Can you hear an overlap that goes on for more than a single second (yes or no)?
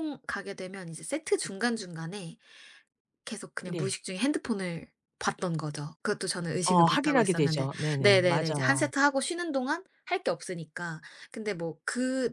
yes